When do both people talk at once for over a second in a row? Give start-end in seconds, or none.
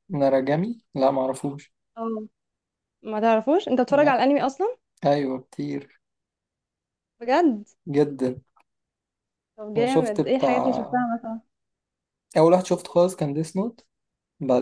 9.8-11.1